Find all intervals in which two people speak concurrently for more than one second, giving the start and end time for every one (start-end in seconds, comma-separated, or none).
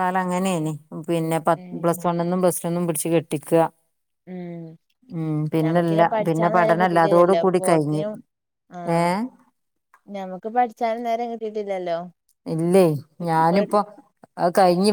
5.6-8.0